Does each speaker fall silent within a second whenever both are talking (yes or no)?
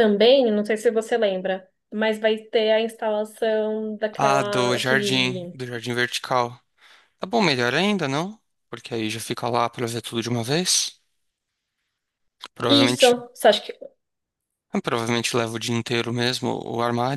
no